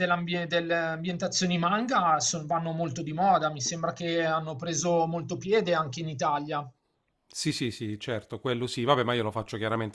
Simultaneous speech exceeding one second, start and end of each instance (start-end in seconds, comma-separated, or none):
none